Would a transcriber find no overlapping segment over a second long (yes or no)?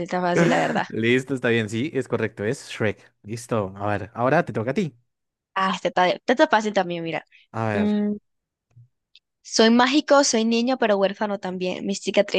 yes